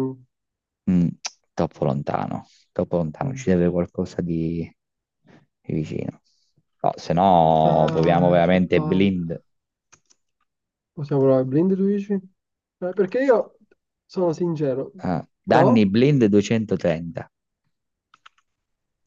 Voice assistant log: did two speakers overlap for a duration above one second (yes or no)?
yes